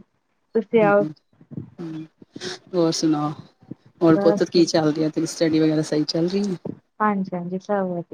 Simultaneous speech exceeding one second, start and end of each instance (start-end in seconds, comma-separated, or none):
none